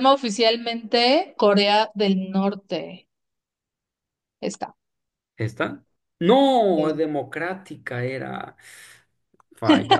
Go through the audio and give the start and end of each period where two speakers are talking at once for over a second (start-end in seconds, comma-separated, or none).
none